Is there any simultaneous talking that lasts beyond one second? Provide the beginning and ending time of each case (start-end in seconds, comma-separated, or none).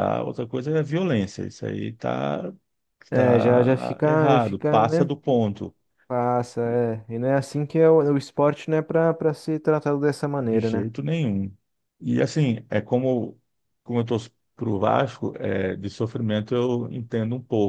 3.1-5.1